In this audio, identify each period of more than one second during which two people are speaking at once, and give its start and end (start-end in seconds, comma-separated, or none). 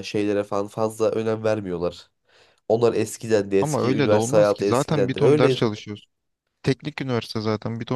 3.6-5.7